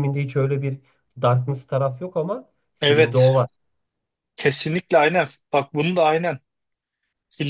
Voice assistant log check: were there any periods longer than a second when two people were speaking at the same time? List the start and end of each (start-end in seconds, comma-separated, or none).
none